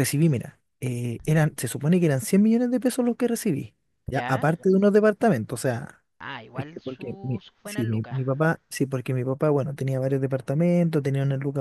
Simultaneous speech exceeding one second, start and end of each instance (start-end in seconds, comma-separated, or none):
6.5-8.2